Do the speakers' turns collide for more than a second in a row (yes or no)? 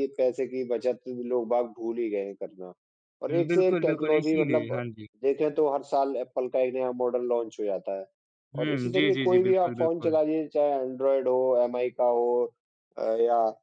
yes